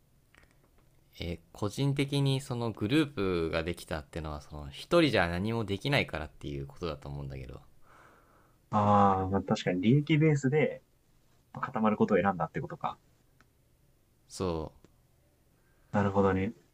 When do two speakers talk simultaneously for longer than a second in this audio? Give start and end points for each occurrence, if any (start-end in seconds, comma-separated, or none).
none